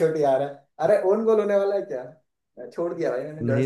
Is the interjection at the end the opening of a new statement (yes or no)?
no